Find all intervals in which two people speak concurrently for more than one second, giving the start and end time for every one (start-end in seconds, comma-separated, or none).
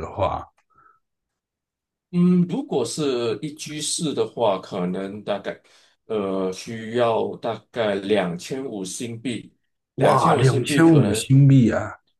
9.9-11.3